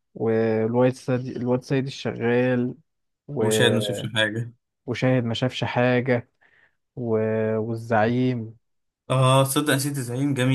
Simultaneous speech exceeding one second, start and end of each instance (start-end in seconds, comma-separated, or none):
none